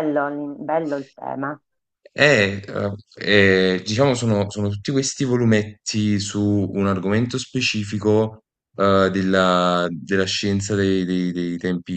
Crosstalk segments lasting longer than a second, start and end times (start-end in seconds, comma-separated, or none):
none